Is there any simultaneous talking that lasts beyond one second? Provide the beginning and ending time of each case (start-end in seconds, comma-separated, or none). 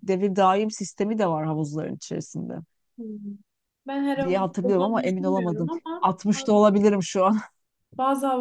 4.2-6.1